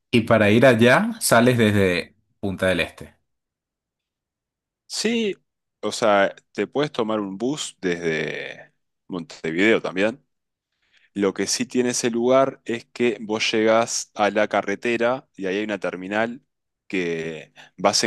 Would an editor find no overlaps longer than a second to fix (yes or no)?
yes